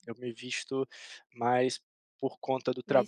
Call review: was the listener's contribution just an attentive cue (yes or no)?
yes